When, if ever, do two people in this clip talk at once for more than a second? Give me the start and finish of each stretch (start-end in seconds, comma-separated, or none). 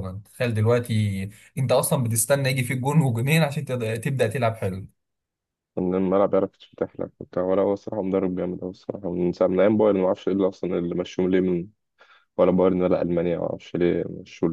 none